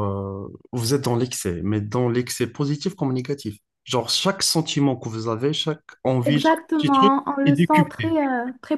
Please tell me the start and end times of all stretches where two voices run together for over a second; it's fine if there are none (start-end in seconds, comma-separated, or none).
6.2-8.1